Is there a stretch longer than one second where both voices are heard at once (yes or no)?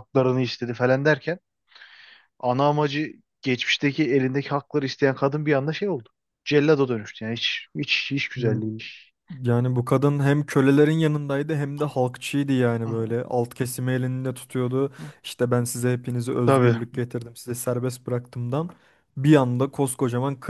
no